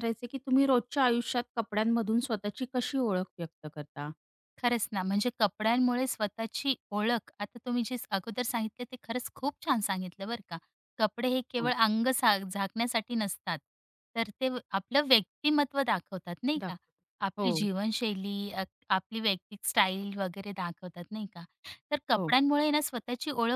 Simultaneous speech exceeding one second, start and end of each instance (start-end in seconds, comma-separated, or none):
none